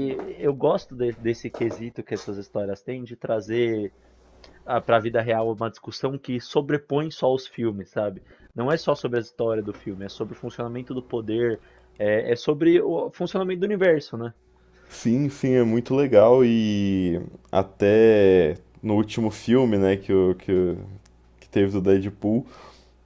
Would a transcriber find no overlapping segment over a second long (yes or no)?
yes